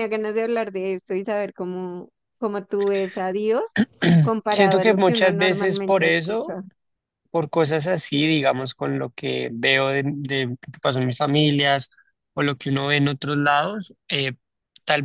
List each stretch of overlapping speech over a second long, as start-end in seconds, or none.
4.5-6.6